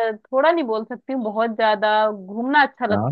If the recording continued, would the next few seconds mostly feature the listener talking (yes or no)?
no